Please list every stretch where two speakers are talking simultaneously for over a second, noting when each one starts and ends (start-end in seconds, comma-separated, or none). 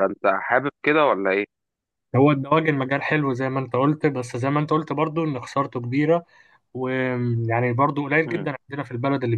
none